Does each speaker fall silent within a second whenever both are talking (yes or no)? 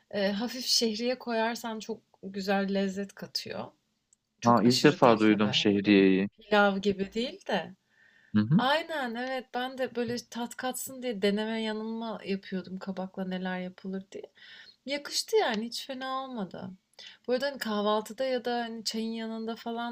no